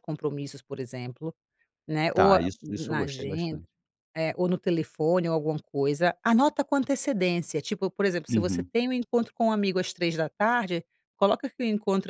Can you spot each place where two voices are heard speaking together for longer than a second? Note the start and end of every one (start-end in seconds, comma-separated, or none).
2.1-3.6